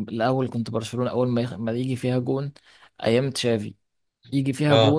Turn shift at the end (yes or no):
no